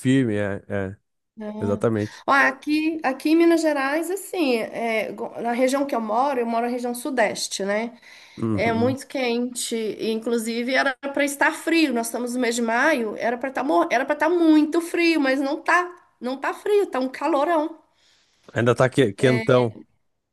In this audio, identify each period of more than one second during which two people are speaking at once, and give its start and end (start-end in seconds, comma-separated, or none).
none